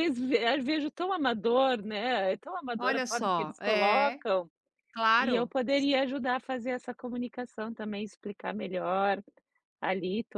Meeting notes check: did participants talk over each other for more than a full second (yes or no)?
yes